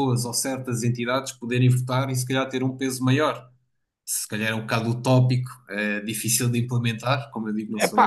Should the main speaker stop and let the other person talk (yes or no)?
no